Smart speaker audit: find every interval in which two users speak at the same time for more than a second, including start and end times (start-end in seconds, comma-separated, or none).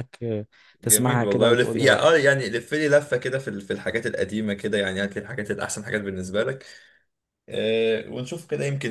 0.8-2.2